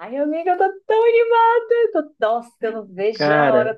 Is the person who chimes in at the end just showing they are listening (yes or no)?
yes